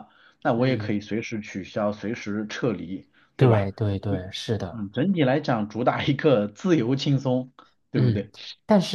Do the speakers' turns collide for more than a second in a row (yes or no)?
no